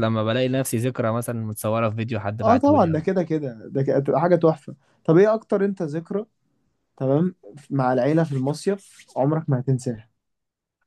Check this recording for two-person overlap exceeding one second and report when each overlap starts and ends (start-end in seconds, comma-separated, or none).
none